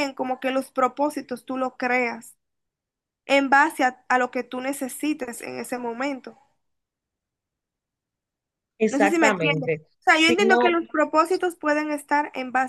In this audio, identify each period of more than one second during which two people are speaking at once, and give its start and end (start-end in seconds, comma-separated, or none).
8.9-10.8